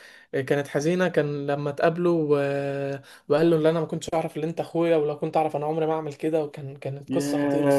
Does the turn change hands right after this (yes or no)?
yes